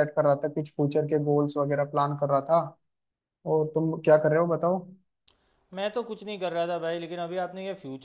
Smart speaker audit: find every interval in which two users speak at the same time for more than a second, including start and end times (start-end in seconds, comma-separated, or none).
none